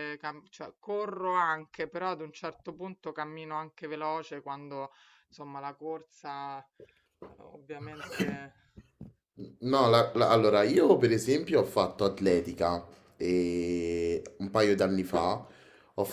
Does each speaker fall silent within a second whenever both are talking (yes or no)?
yes